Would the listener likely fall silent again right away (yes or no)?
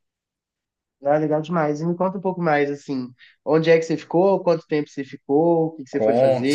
no